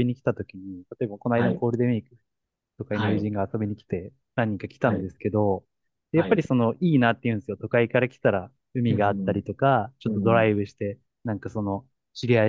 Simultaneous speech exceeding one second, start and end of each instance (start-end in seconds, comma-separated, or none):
none